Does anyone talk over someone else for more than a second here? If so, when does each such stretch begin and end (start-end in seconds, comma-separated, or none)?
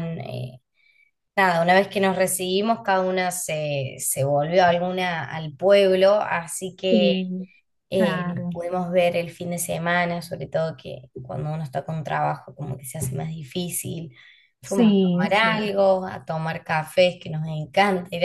14.6-15.8